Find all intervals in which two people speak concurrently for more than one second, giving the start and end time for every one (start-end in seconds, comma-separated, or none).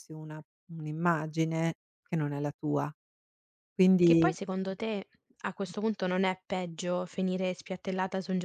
none